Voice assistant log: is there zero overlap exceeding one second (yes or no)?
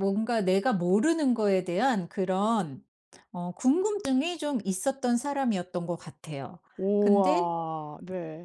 yes